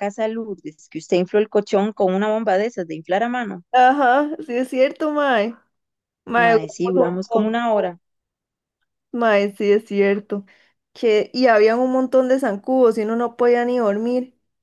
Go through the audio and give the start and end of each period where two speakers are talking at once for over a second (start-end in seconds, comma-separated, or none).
6.4-7.9